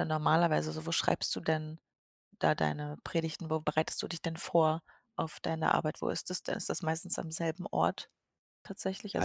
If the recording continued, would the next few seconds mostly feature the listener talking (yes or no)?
yes